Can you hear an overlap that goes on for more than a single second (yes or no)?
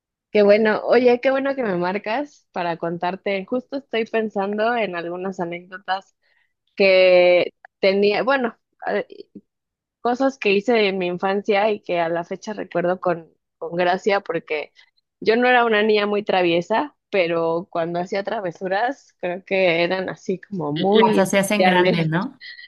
yes